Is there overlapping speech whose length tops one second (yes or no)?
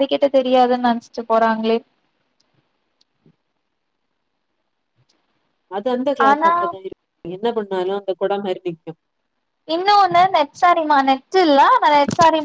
no